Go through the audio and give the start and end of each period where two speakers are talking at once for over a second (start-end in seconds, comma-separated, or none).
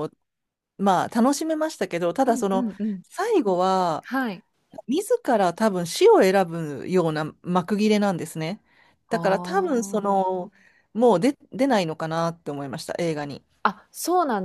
9.1-10.4